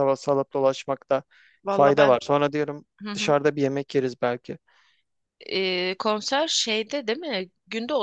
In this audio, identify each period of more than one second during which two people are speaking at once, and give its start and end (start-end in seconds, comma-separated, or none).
none